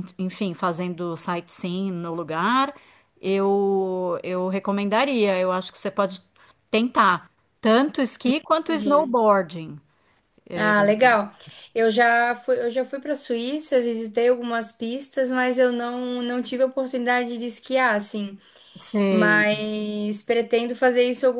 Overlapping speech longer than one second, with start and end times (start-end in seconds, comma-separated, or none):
none